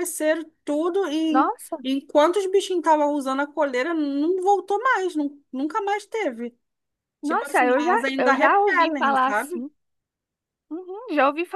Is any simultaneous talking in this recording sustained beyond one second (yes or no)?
yes